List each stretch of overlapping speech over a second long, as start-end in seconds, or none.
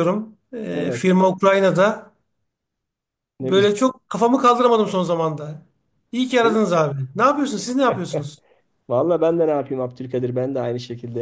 none